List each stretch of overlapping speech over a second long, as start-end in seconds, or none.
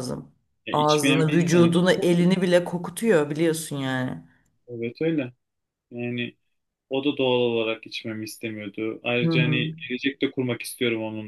0.7-2.5